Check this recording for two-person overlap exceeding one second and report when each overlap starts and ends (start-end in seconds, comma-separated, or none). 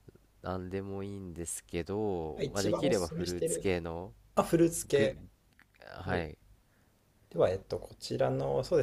2.4-3.7